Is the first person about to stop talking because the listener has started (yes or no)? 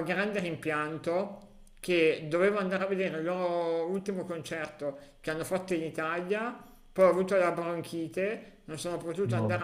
no